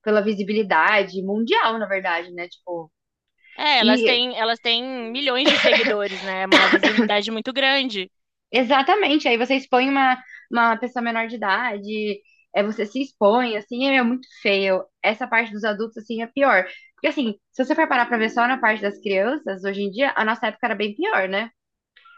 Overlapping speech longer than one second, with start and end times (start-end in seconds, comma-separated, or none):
none